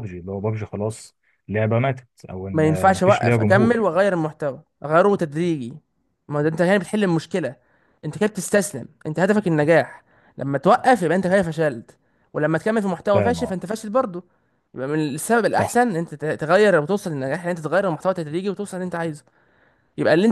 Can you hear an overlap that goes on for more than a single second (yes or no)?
yes